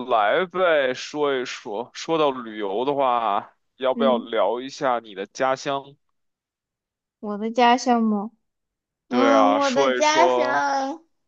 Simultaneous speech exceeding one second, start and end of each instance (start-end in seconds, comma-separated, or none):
9.1-10.6